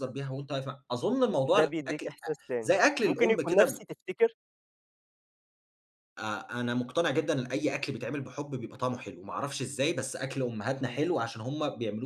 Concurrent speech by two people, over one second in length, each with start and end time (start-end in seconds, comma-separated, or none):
1.6-3.9